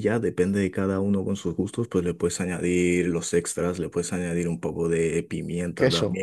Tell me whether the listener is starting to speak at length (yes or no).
no